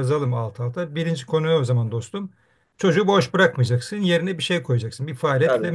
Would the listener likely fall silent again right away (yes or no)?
yes